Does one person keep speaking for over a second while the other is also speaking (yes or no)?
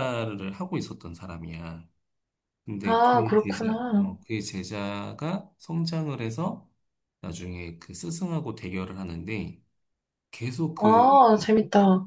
yes